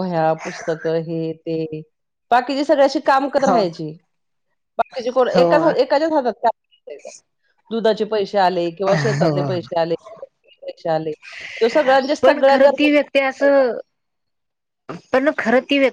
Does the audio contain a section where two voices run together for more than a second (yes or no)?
yes